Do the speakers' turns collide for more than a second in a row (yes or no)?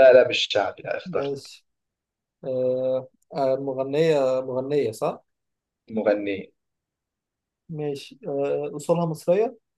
no